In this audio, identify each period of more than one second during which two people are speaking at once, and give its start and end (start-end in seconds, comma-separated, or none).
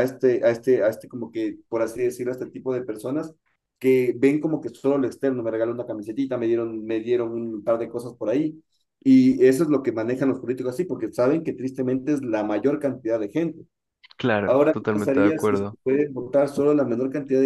14.4-15.8